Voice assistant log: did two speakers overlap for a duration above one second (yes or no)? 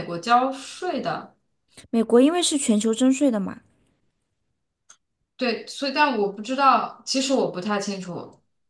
no